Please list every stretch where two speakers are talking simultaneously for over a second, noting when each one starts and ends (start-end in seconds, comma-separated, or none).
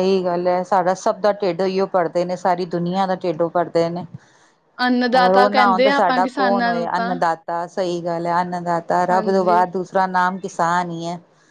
5.2-7.1